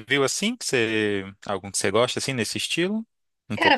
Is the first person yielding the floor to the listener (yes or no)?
yes